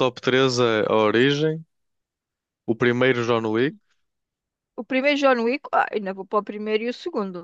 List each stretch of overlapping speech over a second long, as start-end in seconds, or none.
none